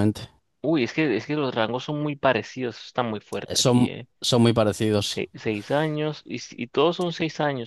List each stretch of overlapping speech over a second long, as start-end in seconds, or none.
none